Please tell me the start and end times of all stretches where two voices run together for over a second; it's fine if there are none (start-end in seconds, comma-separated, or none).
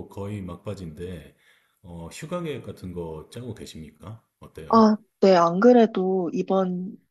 none